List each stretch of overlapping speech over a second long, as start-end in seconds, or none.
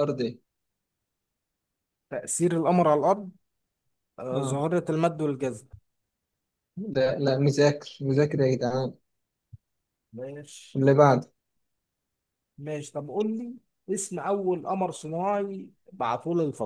none